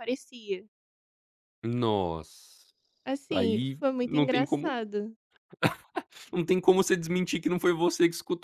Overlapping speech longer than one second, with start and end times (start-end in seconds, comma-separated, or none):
3.3-4.8